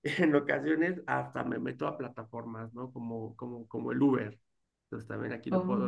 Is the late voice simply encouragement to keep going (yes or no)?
yes